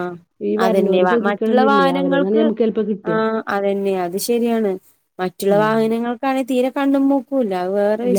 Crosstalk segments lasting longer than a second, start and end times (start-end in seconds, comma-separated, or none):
0.6-2.4